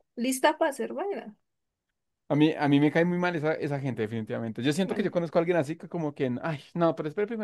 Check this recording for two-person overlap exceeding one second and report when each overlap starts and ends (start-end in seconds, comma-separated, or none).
none